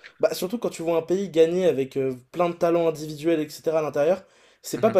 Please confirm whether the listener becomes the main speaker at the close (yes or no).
no